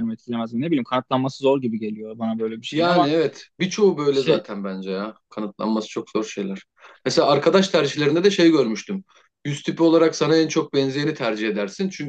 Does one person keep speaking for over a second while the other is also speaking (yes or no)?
no